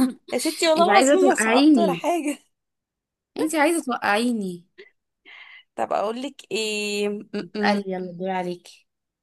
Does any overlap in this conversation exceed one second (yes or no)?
yes